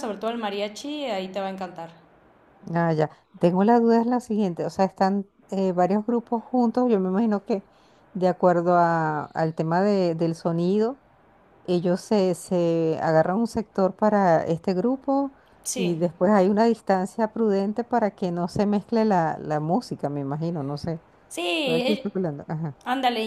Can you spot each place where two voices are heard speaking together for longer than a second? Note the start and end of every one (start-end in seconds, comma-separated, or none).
none